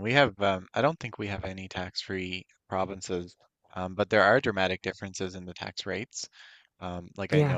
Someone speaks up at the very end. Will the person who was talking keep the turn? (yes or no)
yes